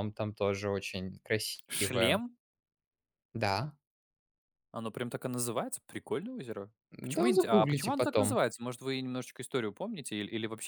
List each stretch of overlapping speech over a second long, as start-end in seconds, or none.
7.0-8.4